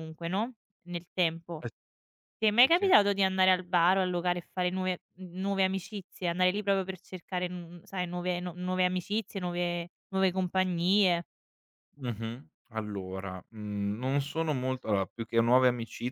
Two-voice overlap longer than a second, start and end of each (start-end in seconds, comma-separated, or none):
none